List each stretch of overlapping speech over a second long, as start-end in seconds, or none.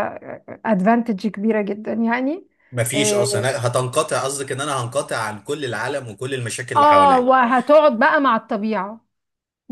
none